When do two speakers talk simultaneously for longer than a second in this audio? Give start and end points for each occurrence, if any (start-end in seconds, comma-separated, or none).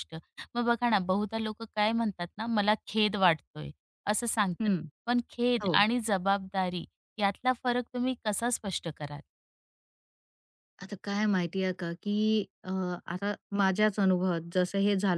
none